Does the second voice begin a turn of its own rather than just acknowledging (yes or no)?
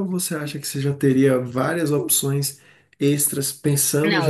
yes